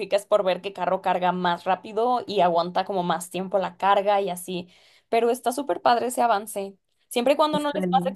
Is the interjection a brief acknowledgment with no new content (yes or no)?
yes